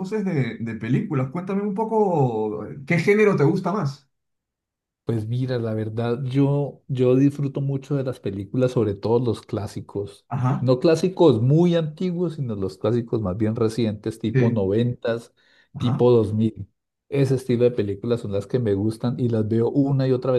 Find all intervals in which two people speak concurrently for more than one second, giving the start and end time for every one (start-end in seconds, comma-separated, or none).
none